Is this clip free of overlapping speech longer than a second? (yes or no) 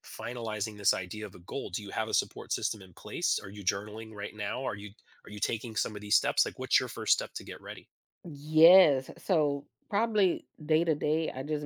yes